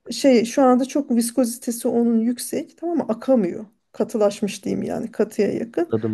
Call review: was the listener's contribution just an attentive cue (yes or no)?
yes